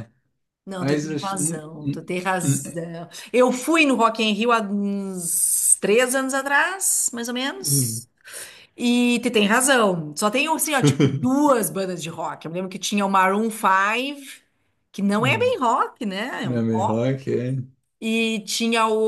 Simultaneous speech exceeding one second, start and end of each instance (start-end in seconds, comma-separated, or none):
0.8-2.6